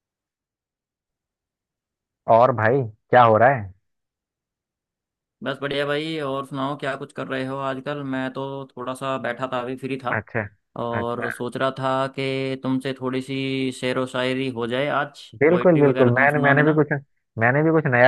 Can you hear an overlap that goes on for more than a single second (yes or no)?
yes